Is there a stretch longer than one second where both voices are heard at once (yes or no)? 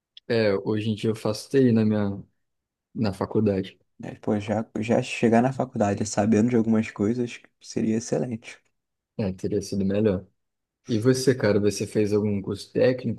no